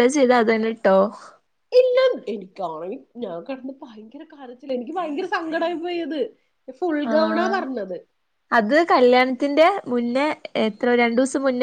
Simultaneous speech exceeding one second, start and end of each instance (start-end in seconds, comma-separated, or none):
none